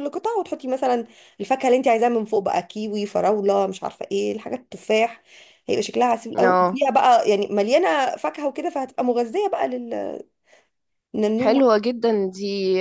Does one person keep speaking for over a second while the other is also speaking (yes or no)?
no